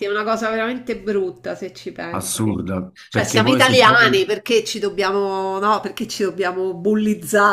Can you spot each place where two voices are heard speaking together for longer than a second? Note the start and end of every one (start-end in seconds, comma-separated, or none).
3.1-4.3